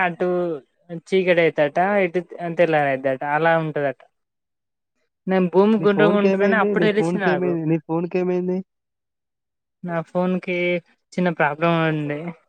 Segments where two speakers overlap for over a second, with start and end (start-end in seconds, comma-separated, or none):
5.8-7.5